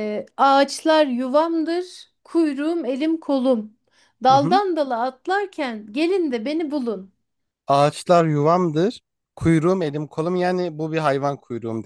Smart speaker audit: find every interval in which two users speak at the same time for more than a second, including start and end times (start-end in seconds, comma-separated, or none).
none